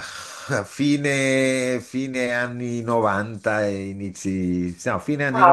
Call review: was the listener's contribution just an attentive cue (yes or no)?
no